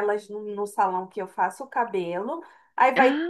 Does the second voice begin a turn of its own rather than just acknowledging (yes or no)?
no